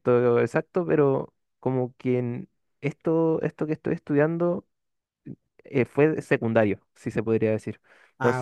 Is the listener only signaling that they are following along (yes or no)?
yes